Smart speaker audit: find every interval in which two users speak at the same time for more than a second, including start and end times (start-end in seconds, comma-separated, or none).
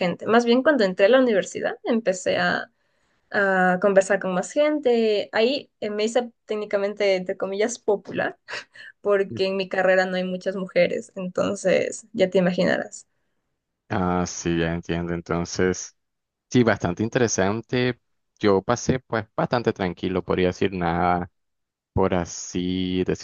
none